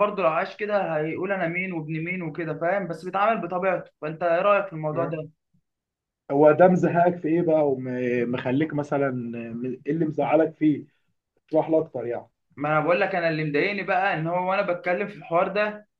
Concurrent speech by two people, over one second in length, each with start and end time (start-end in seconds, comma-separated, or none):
none